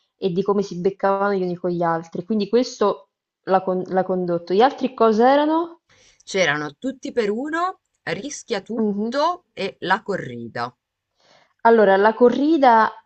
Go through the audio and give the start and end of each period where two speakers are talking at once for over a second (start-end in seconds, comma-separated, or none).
none